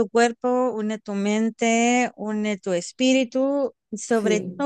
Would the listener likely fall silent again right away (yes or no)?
yes